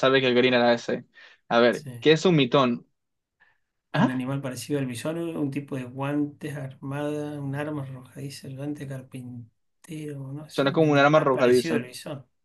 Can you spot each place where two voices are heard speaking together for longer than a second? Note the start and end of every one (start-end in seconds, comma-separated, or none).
10.5-11.8